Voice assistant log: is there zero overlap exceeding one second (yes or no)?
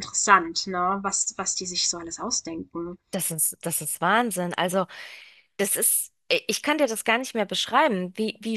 yes